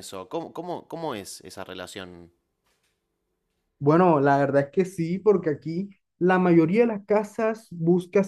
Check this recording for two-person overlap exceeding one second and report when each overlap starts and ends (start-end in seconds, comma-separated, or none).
none